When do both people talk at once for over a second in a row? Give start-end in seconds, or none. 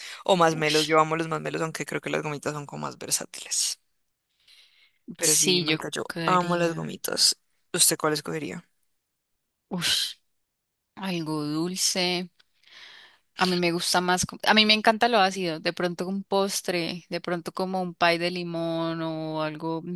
5.2-6.9